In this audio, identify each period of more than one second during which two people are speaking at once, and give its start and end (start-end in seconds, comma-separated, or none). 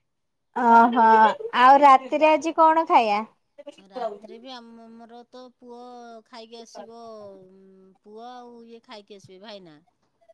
none